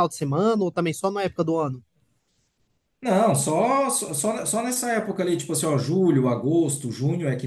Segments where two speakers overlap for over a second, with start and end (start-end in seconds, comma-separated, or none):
none